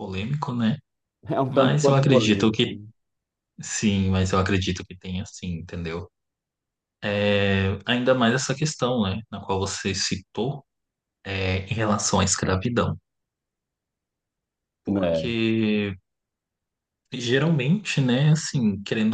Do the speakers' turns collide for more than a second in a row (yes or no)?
yes